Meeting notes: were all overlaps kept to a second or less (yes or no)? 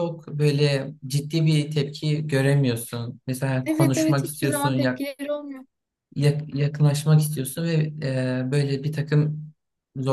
no